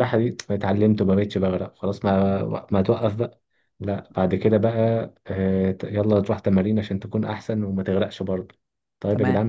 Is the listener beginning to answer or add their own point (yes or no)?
no